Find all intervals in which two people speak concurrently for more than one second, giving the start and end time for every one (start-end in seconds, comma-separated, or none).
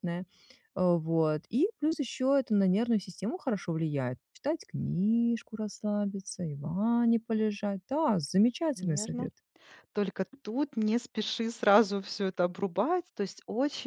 none